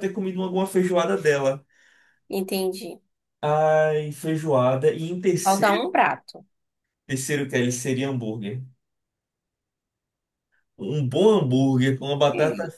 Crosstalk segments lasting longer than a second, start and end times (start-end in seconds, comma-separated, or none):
none